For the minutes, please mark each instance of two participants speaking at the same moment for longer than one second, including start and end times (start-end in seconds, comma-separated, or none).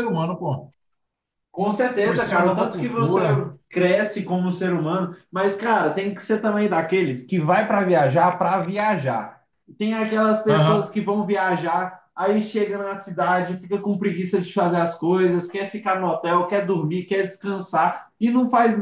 2.0-3.2